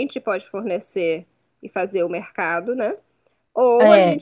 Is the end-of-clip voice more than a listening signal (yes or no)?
no